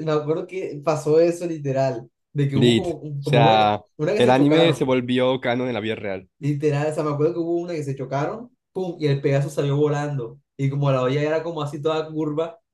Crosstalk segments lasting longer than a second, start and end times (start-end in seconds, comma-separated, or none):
2.5-4.9